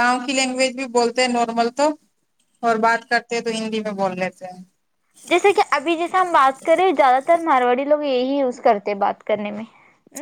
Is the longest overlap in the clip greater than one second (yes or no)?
no